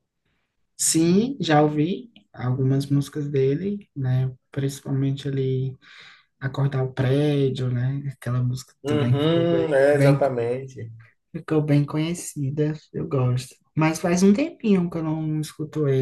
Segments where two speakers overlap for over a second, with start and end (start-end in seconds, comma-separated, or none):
8.8-10.2